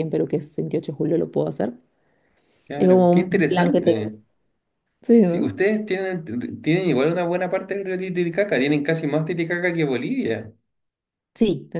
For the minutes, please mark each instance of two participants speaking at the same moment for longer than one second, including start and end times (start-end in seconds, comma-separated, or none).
2.8-4.1